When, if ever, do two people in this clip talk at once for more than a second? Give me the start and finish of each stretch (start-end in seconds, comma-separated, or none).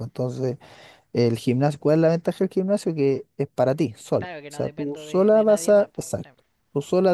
4.2-6.3